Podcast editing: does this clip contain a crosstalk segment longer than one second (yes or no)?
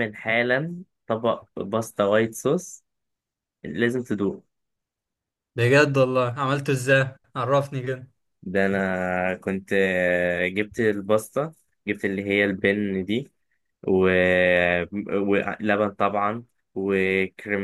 no